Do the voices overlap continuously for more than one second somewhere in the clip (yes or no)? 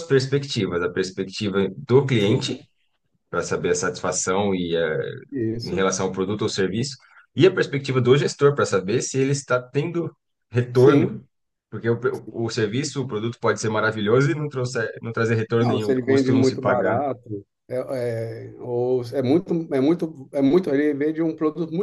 yes